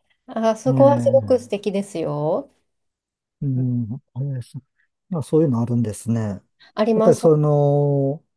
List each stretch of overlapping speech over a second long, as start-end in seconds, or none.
none